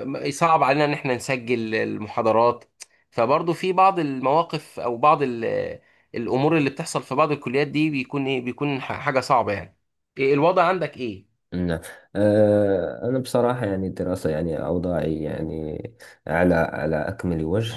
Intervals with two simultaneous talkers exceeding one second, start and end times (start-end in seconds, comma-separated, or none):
none